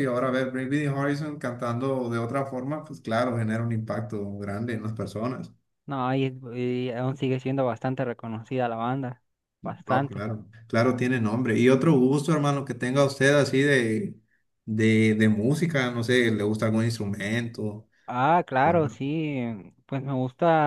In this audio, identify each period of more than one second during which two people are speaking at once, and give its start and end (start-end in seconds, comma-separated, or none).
none